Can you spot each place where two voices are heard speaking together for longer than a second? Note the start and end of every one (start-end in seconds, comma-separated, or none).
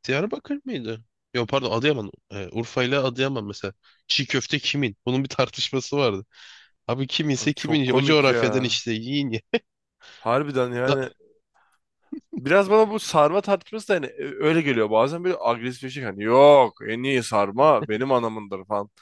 7.4-8.8